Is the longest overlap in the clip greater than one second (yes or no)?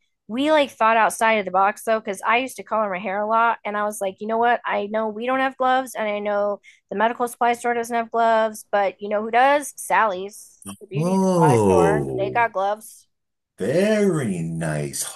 yes